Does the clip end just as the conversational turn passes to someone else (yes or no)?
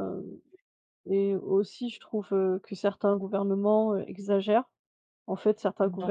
no